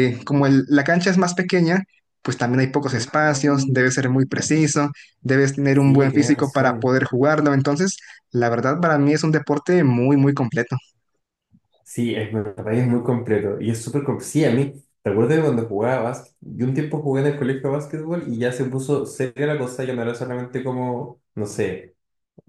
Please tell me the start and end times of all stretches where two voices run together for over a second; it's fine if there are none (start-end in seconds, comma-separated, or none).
5.7-6.9